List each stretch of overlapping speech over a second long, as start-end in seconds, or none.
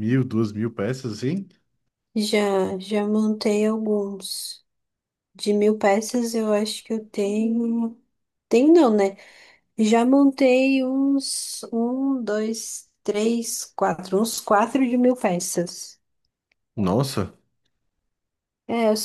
none